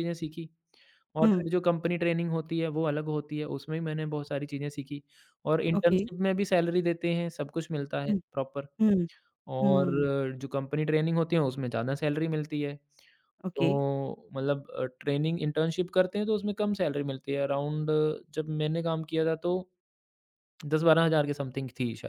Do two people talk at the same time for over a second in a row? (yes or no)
no